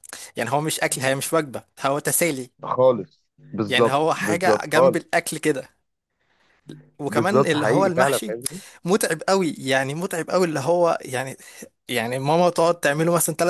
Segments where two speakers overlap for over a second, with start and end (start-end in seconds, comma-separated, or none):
3.7-5.0, 7.1-8.3